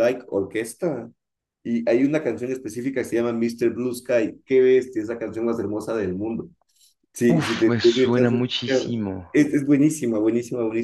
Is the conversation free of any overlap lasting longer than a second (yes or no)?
no